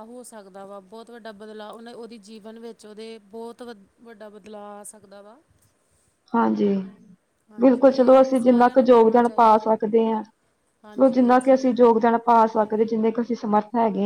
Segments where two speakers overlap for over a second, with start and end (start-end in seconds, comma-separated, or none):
7.6-9.7